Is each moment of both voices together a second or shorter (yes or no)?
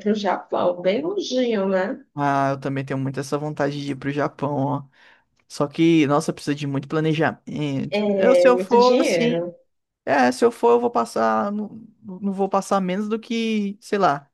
no